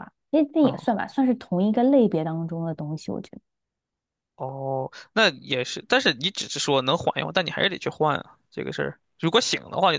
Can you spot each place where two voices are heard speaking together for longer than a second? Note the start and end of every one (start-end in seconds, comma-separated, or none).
none